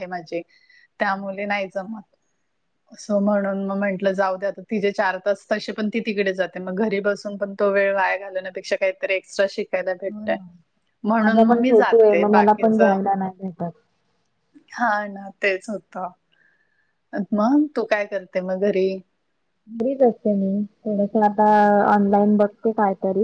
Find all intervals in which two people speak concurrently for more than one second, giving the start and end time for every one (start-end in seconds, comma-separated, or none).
11.2-12.9